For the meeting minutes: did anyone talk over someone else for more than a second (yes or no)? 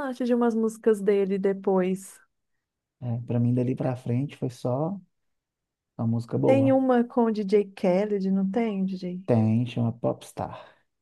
no